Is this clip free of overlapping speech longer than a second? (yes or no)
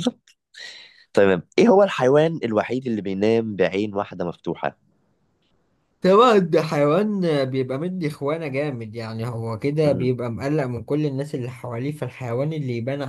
yes